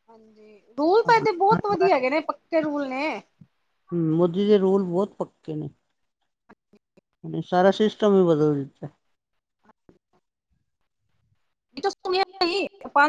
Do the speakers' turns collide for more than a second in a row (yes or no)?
no